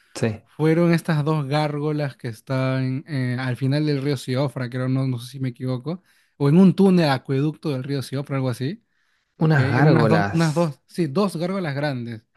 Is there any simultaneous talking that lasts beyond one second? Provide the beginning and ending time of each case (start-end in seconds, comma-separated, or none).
9.4-10.7